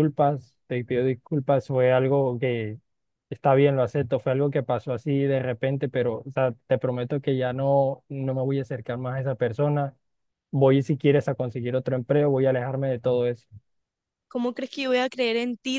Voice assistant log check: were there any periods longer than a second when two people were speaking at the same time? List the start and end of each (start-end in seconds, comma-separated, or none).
none